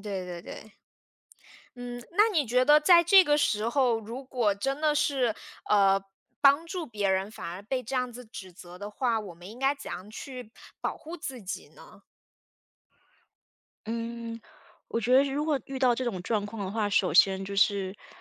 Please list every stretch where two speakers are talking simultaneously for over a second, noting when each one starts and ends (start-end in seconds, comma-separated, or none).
none